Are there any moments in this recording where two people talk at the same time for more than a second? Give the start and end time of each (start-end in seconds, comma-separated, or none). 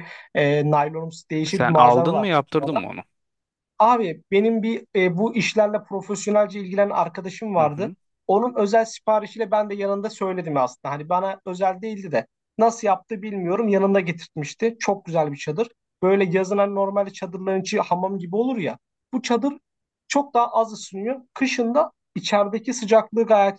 1.5-2.8